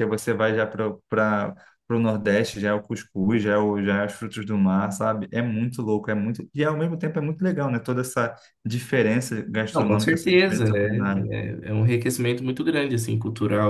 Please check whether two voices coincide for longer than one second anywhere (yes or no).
yes